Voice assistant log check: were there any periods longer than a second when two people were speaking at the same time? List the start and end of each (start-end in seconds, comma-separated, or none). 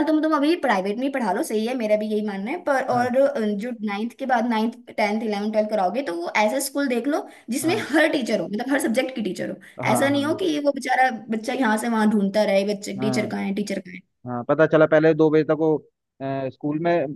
none